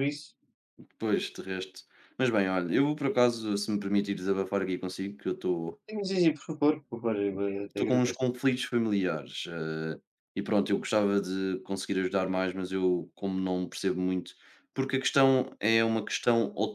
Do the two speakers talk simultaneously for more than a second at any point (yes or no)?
no